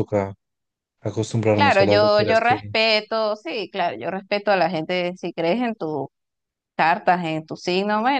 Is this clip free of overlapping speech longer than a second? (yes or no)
no